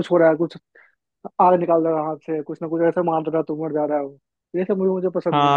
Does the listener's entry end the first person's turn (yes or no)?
yes